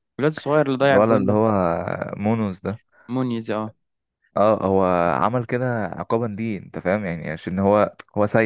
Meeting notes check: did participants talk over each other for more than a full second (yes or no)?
no